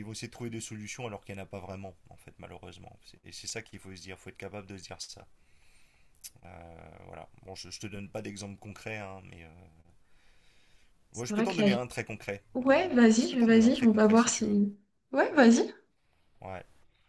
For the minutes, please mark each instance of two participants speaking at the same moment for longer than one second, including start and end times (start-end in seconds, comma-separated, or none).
12.5-14.6